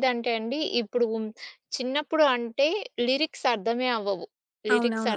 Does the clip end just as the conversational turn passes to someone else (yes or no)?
no